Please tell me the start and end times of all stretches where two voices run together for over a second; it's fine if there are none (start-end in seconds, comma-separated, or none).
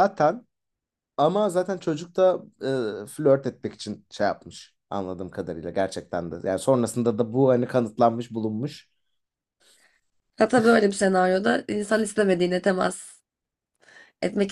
none